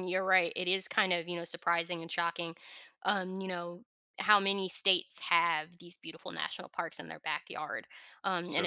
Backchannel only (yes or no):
yes